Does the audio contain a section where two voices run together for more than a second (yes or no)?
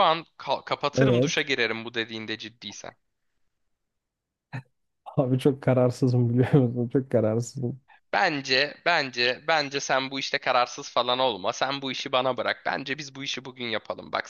no